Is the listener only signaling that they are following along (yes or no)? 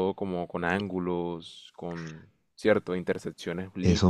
no